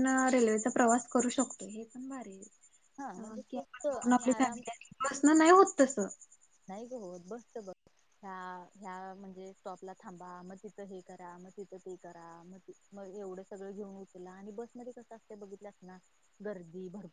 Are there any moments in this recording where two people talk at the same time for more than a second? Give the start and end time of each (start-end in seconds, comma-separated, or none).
3.0-4.6